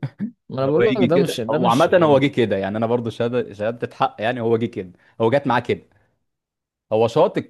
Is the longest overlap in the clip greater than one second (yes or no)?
yes